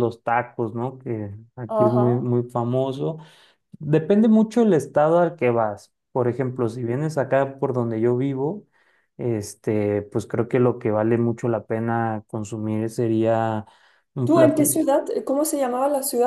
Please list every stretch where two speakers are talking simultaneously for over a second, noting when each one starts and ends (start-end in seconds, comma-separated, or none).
none